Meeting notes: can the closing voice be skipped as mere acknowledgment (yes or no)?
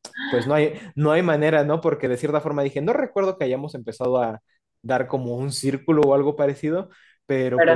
yes